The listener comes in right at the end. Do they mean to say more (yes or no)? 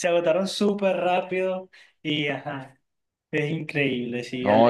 yes